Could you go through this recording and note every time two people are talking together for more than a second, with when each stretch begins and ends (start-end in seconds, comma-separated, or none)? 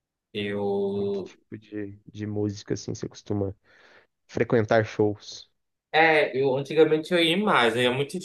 none